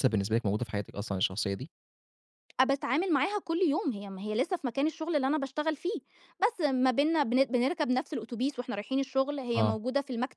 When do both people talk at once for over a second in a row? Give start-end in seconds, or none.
none